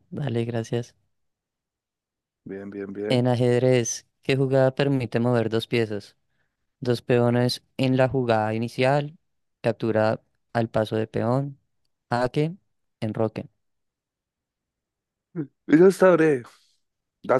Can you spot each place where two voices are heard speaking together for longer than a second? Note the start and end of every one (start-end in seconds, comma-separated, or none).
none